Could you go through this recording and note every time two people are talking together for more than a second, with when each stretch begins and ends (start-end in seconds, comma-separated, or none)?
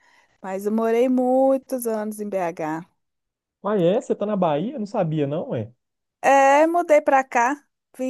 none